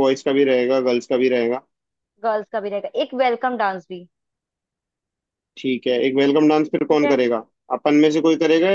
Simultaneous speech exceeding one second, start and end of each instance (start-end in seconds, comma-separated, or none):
none